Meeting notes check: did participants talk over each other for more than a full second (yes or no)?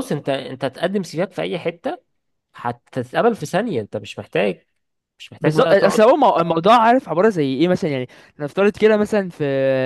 no